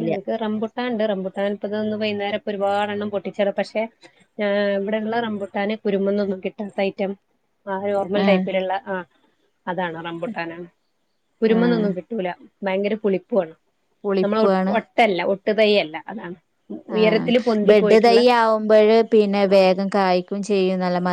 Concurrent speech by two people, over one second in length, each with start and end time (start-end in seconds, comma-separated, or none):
none